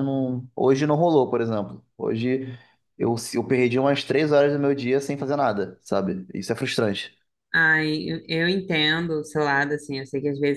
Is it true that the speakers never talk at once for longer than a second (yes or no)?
yes